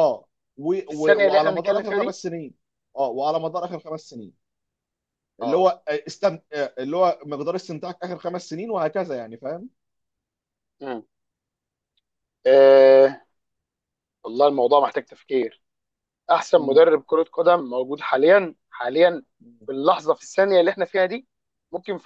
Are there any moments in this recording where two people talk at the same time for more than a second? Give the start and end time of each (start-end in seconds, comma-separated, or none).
0.9-2.1